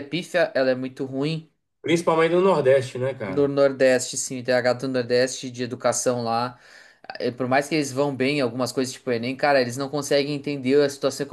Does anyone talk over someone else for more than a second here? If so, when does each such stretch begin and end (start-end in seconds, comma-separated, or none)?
none